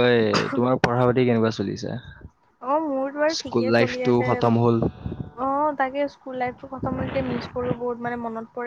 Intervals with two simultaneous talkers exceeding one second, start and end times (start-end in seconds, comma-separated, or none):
none